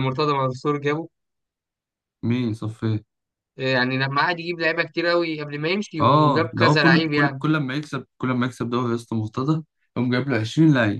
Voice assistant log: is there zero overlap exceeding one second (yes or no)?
no